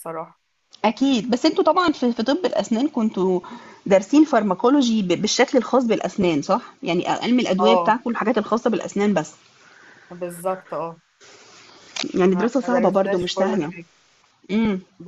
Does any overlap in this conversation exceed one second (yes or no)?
yes